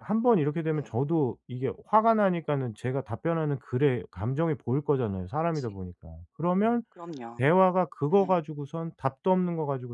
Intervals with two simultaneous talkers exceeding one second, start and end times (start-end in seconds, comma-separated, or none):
none